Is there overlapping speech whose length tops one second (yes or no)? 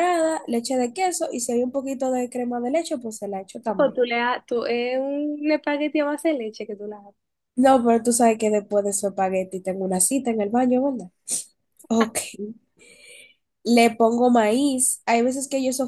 no